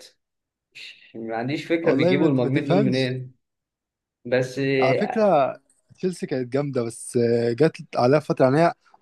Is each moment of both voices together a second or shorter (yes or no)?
no